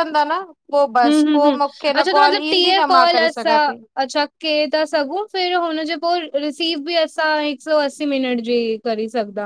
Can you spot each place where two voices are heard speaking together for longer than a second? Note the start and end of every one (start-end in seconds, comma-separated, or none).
1.0-3.5